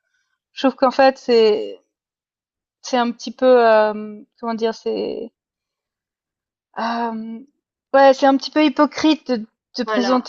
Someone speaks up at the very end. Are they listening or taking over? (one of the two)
listening